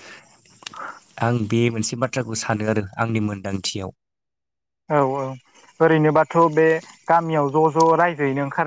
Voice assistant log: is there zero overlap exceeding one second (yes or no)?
yes